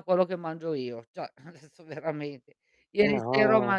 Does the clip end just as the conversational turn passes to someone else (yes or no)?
no